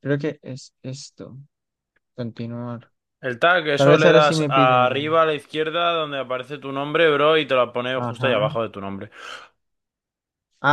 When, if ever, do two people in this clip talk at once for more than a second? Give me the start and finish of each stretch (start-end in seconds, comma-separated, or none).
3.8-5.2